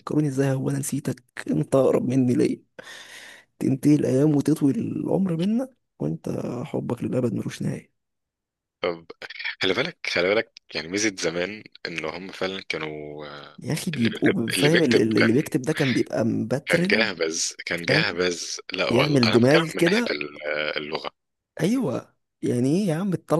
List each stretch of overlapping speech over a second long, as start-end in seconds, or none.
13.9-15.4, 18.9-20.2